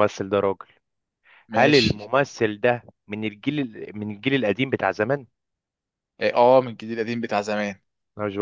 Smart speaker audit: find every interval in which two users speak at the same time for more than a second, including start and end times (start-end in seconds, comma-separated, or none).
none